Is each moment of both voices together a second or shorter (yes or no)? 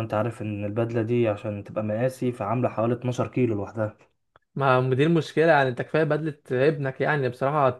yes